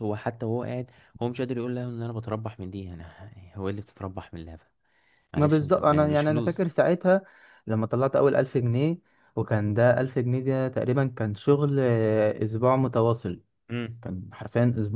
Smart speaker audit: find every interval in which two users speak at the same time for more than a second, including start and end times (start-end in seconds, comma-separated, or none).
5.4-6.7